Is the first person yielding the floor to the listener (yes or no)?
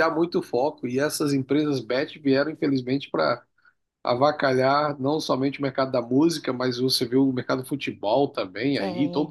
no